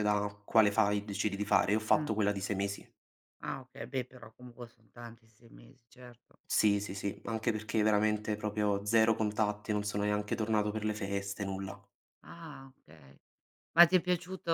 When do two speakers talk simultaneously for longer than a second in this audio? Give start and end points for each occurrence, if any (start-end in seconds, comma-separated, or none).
none